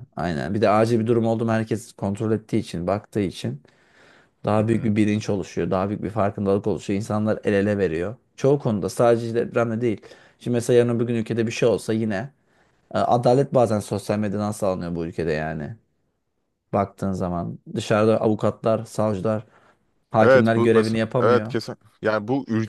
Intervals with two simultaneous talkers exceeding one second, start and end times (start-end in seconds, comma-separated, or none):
20.2-21.6